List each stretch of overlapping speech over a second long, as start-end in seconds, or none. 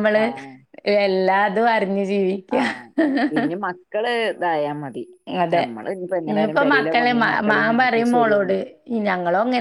6.3-8.5